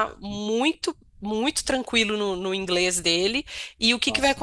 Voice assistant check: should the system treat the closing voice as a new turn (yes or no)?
no